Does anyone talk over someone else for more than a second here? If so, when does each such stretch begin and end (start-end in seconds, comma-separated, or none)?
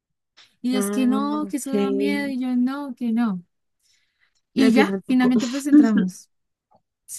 0.7-2.4